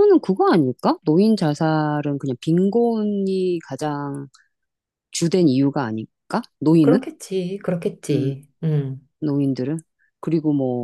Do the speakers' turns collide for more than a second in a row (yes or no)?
no